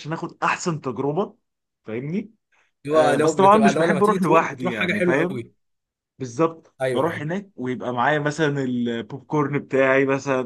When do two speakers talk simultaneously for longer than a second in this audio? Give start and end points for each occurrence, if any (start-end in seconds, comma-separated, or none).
2.9-5.4